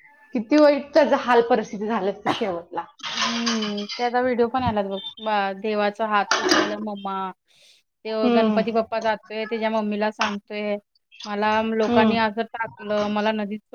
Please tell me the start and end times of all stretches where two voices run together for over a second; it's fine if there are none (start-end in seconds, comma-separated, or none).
none